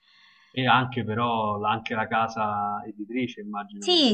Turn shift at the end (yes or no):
yes